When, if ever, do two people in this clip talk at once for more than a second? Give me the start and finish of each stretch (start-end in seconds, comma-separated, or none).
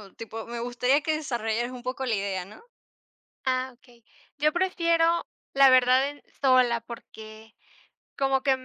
none